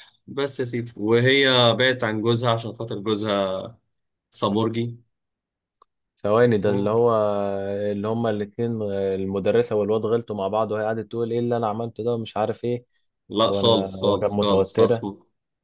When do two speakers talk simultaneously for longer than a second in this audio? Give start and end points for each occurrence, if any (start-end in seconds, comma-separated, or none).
13.4-15.1